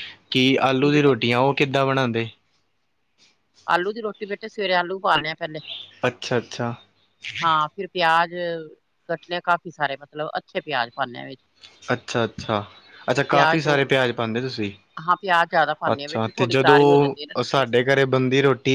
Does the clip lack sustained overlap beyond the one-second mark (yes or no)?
no